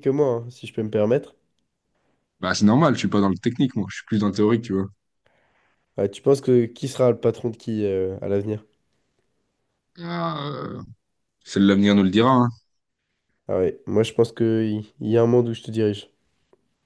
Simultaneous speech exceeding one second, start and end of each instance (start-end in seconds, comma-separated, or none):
none